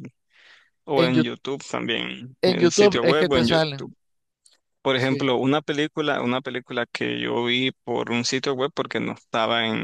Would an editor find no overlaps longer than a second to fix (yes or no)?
no